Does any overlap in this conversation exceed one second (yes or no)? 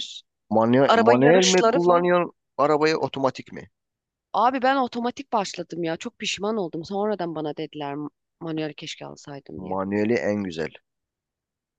yes